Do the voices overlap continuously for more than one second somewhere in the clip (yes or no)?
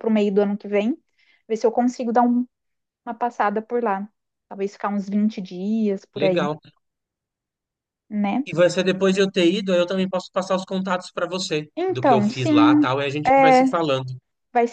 yes